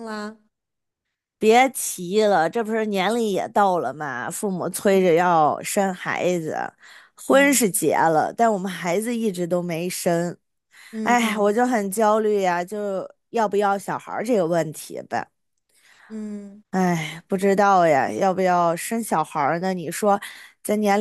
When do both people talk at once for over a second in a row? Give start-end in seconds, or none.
none